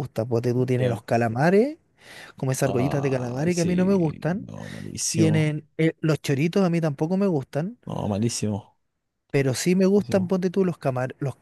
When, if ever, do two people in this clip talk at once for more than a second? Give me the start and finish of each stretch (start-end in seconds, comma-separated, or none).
2.6-4.5